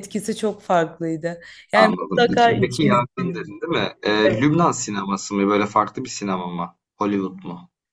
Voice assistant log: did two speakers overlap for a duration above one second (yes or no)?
yes